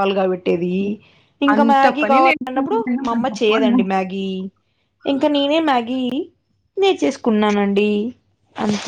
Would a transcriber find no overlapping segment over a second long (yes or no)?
no